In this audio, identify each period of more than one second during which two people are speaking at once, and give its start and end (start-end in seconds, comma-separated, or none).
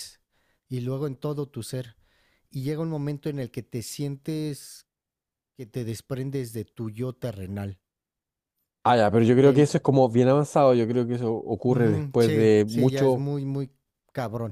11.7-13.3